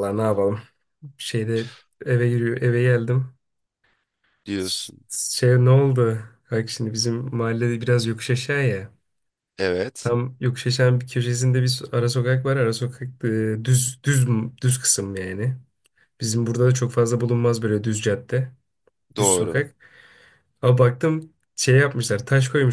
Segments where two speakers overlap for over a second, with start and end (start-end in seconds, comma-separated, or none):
none